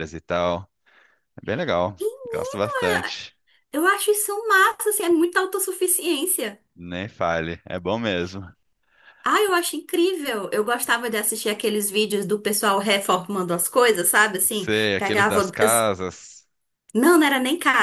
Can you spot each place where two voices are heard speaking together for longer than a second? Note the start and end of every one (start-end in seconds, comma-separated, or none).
14.5-15.9